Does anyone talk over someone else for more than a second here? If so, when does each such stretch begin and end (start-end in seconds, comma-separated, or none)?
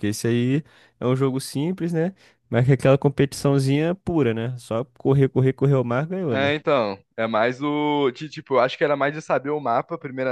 none